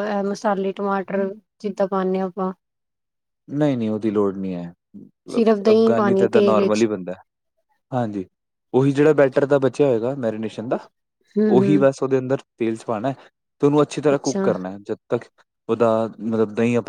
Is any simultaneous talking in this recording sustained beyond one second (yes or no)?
yes